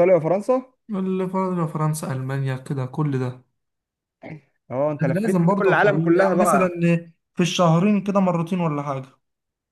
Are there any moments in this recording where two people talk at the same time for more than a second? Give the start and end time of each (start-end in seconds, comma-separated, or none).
5.0-6.7